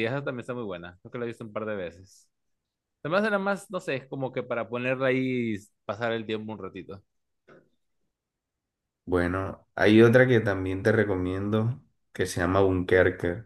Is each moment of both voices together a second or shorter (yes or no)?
yes